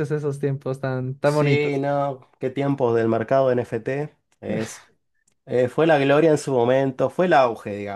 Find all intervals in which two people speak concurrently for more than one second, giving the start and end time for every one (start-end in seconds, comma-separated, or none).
none